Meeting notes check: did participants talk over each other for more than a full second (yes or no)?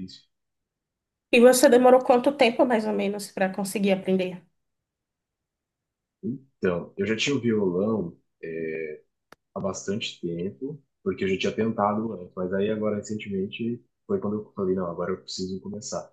no